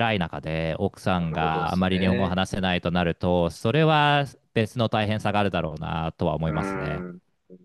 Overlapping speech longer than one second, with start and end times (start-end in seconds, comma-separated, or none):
1.1-2.4